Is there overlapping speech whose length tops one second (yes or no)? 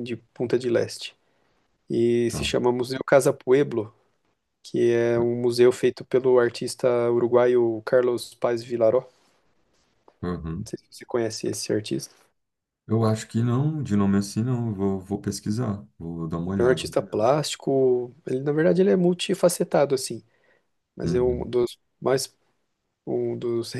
no